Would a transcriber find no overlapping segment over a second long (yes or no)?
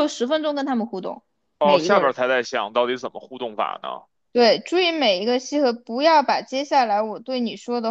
yes